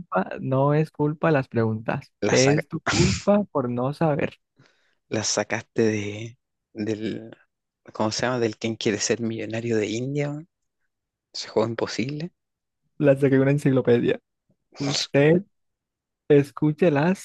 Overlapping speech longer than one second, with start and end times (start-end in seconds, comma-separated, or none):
none